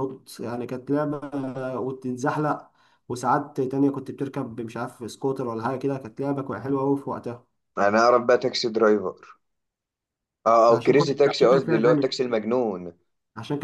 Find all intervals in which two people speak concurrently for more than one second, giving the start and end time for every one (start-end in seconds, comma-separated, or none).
10.7-12.1